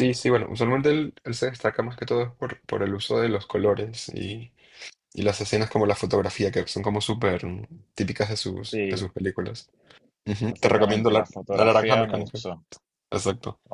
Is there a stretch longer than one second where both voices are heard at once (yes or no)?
yes